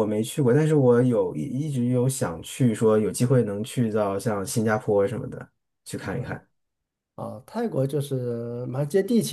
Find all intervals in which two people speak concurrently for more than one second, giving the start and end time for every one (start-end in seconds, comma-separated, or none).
none